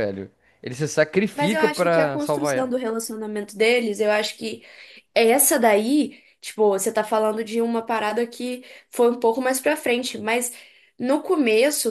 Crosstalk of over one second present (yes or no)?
yes